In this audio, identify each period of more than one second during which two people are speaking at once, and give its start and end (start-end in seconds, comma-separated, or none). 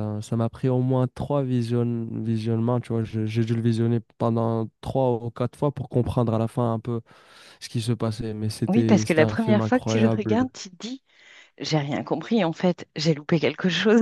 8.7-10.5